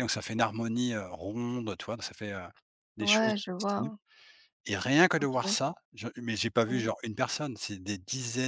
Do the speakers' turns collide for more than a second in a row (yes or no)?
no